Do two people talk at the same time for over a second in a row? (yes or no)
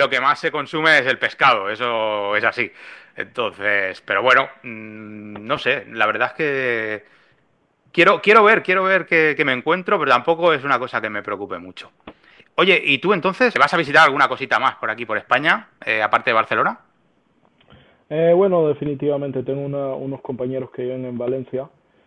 no